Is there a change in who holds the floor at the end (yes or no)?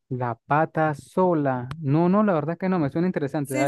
yes